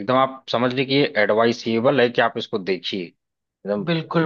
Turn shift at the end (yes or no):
yes